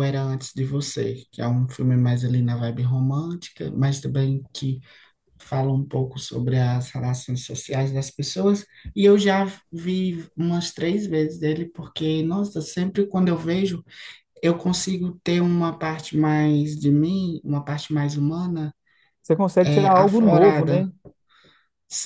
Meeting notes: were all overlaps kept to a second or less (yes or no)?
no